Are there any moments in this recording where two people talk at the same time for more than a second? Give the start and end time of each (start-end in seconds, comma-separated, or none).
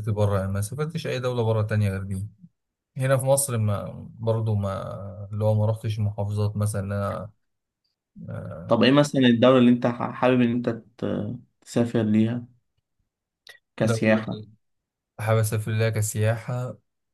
none